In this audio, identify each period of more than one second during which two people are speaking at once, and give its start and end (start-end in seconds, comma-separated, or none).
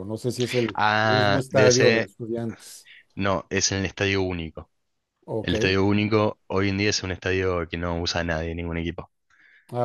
0.8-2.1